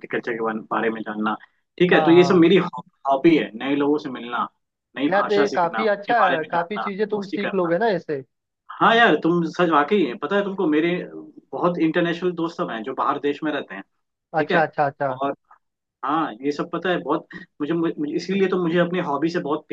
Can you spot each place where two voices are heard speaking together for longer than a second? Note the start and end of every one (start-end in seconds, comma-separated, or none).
5.1-7.7